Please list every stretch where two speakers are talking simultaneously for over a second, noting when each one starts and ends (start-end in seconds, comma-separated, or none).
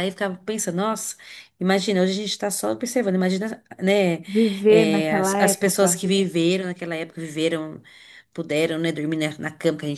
4.7-6.0